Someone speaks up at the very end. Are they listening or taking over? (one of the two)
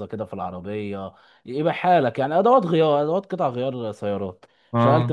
listening